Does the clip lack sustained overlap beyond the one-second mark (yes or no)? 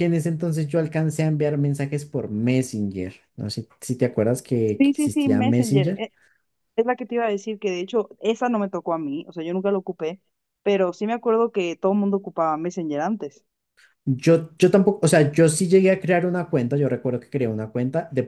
no